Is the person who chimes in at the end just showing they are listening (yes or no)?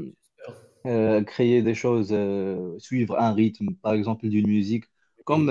yes